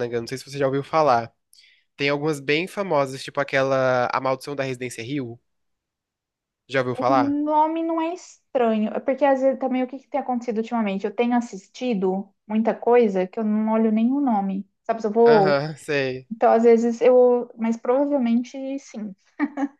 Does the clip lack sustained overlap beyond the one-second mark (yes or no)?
yes